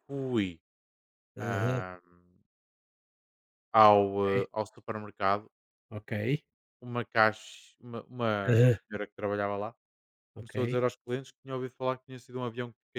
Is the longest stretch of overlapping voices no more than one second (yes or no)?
yes